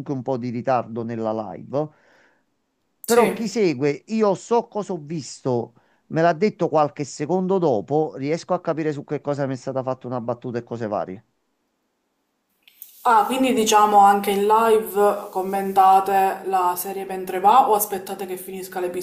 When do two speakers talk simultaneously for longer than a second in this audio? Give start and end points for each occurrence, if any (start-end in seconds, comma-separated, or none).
none